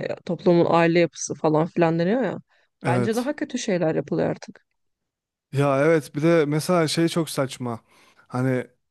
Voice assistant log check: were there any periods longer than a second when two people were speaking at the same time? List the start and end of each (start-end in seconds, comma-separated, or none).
none